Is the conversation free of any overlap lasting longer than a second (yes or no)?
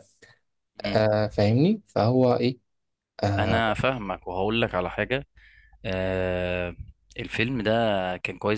yes